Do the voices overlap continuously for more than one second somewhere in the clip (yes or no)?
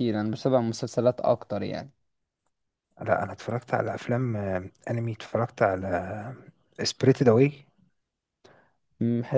no